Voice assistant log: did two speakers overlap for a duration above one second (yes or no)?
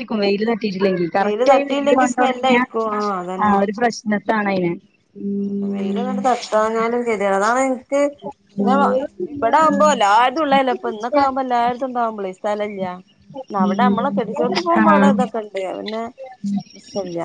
yes